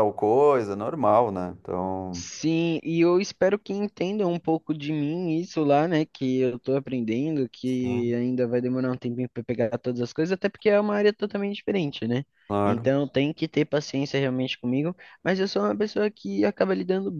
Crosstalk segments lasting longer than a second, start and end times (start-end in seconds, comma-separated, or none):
none